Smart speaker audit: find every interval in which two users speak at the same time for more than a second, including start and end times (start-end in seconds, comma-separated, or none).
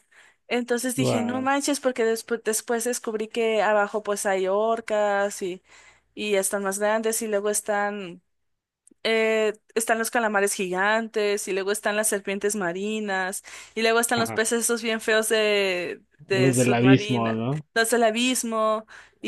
16.3-17.6